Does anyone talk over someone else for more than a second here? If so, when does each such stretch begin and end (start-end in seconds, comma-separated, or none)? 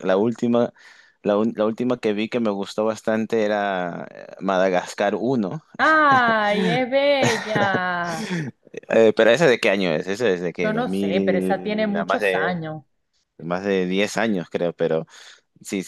10.6-12.6